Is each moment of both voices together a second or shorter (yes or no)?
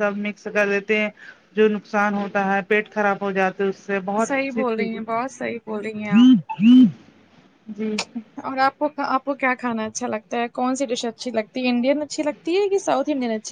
yes